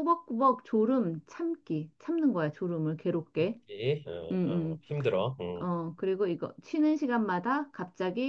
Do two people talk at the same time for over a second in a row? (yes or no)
no